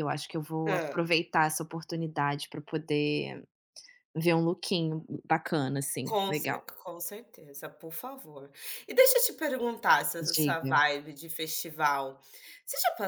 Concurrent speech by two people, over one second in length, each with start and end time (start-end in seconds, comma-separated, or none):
none